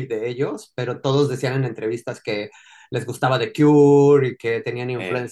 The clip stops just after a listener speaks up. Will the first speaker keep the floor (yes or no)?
yes